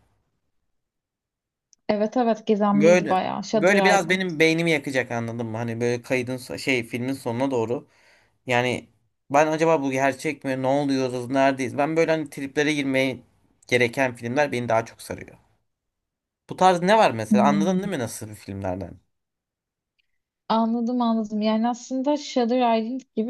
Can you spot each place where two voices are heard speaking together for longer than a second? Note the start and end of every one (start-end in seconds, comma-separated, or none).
2.7-4.2